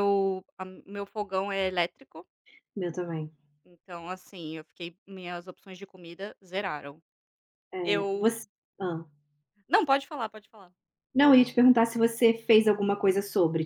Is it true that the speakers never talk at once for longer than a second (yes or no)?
yes